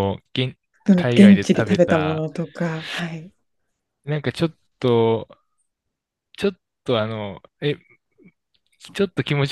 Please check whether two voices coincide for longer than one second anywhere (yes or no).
yes